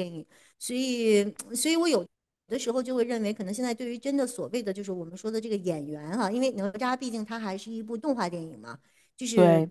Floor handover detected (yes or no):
no